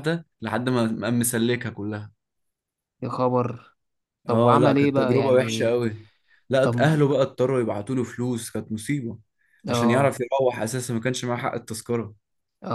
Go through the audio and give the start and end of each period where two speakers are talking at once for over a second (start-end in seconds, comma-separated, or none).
4.3-5.7